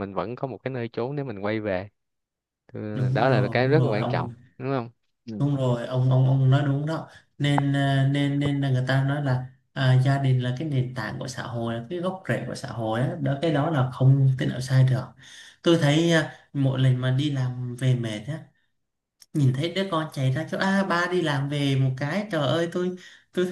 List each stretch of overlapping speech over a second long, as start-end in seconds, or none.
2.9-4.3